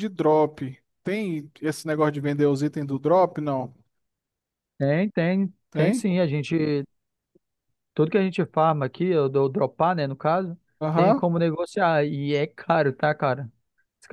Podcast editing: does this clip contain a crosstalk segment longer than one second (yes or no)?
no